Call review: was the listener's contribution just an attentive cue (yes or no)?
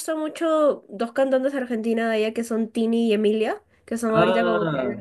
yes